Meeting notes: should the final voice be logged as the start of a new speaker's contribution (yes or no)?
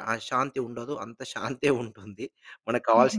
yes